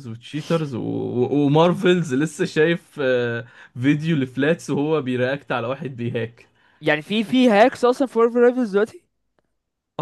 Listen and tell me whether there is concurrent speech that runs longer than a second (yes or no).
no